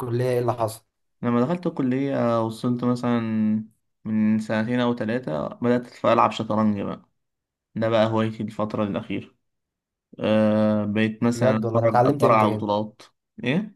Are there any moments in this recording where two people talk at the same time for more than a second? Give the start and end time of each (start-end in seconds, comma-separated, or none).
11.3-12.6